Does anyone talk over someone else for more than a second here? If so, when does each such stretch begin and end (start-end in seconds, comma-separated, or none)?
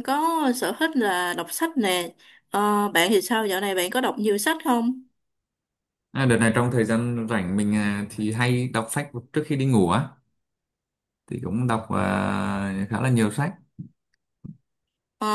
none